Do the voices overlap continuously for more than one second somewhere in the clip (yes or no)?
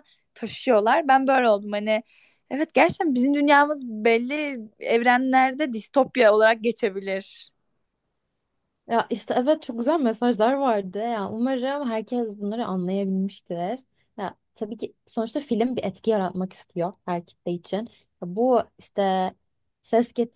no